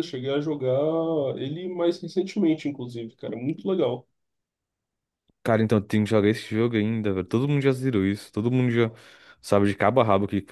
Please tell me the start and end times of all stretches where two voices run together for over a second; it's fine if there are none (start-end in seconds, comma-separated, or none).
none